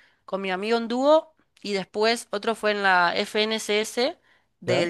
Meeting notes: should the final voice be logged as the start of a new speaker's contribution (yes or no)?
no